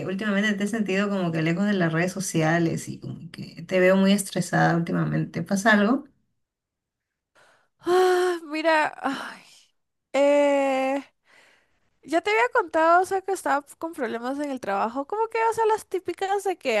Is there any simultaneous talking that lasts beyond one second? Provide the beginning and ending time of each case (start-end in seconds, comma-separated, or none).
none